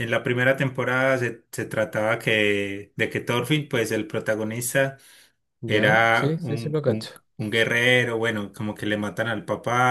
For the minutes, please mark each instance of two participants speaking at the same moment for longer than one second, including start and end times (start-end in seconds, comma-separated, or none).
5.7-7.1